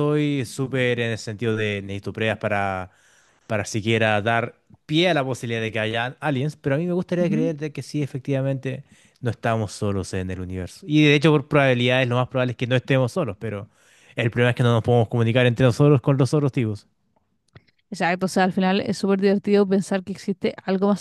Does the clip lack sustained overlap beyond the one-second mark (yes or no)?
yes